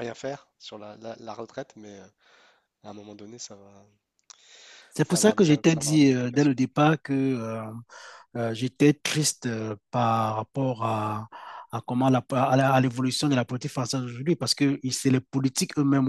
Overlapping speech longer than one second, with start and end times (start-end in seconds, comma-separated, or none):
5.0-6.6